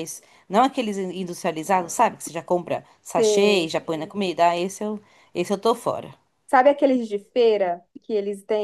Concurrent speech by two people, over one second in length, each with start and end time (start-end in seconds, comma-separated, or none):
none